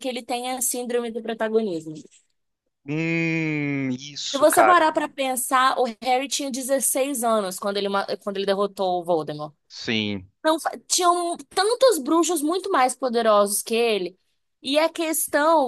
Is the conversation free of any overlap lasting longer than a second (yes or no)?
yes